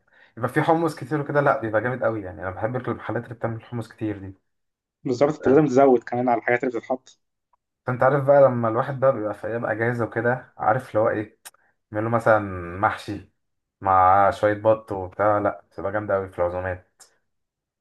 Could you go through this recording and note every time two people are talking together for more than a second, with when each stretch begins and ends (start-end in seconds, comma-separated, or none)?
none